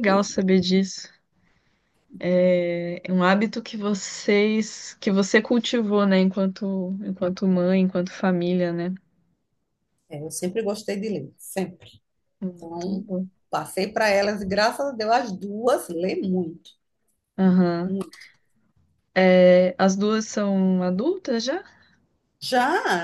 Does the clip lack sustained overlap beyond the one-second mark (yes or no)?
yes